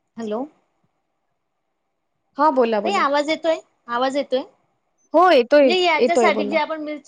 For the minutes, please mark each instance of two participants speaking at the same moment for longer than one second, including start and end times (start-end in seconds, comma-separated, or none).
5.1-6.5